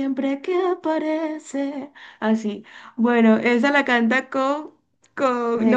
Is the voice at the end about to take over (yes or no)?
no